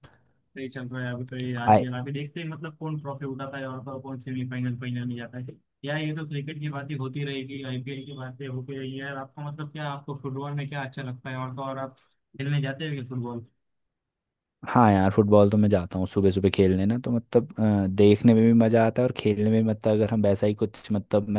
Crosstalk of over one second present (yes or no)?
no